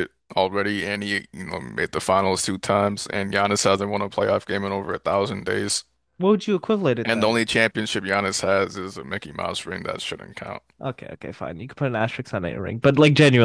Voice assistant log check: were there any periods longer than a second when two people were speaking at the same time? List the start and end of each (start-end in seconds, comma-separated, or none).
none